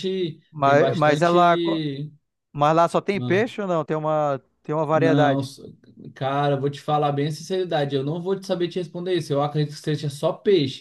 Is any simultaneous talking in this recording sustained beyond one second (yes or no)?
yes